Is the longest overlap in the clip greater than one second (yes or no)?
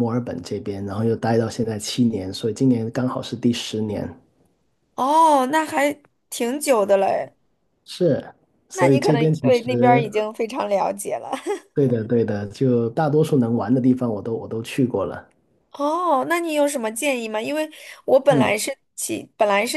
yes